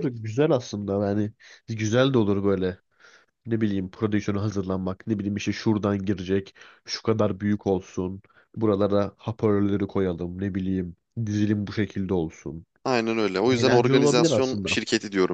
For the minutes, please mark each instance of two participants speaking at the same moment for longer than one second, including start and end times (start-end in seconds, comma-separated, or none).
13.5-14.8